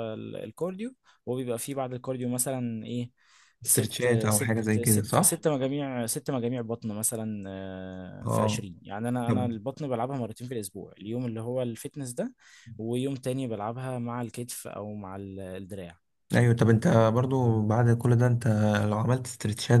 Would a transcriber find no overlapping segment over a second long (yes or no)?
no